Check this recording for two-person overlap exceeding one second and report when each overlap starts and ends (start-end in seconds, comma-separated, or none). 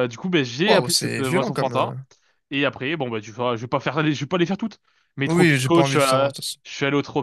0.7-1.9, 5.2-6.6